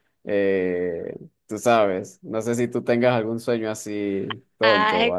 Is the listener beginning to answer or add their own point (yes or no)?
yes